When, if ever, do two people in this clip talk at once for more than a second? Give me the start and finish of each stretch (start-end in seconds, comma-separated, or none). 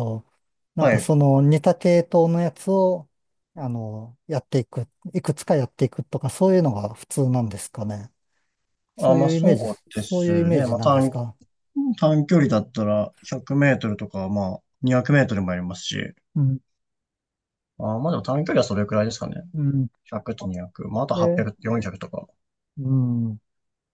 9.0-11.1